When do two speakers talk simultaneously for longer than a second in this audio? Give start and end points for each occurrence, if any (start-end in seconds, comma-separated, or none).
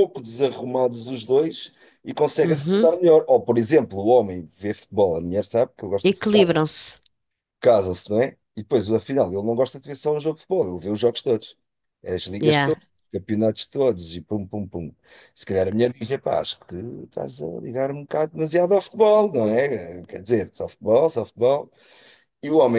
none